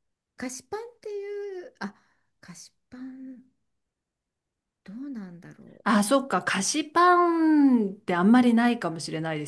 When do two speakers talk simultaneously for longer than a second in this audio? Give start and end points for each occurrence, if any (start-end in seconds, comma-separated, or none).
none